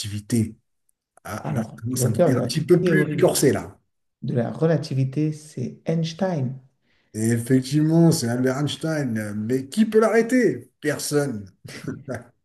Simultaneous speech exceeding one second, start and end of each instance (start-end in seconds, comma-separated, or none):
1.4-3.2